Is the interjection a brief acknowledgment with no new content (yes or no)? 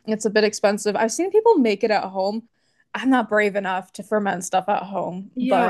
no